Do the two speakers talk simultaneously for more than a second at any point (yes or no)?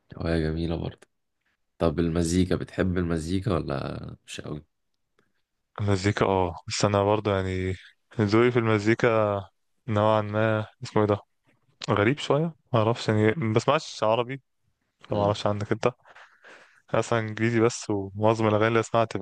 no